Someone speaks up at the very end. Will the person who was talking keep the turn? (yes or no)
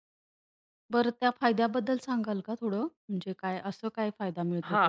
no